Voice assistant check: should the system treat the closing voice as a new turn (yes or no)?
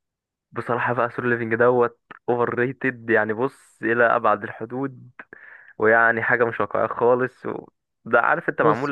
no